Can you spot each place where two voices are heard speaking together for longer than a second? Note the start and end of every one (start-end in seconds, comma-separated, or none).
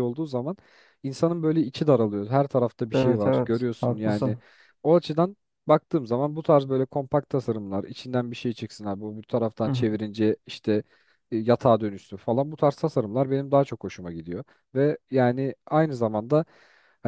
2.9-4.4